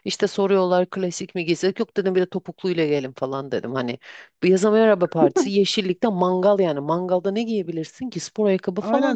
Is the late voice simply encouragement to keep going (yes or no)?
no